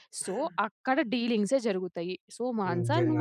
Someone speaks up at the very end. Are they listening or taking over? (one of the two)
listening